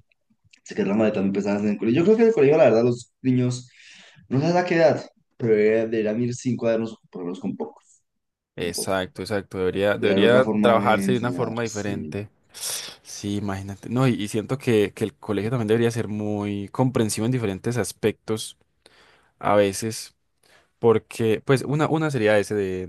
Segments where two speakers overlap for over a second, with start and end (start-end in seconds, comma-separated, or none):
9.9-12.2